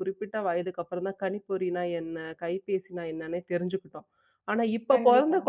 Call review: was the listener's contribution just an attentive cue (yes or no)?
yes